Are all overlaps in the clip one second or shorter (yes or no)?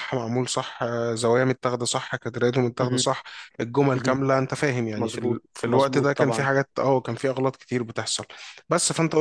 no